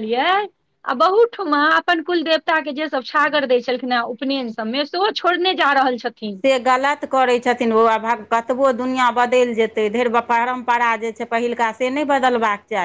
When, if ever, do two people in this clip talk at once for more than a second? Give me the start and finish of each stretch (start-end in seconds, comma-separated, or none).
none